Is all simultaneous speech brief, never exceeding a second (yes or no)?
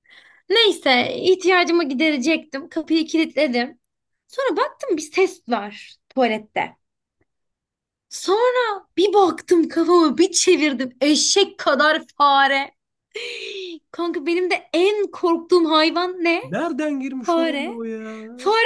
yes